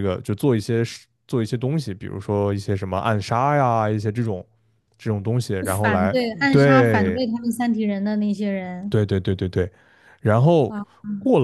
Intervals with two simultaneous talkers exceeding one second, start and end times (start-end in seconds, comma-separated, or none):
5.8-7.2